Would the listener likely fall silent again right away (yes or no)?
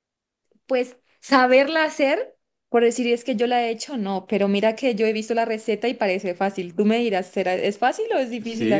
no